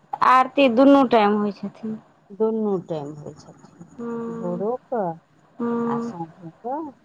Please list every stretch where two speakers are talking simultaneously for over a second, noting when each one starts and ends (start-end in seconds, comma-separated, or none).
none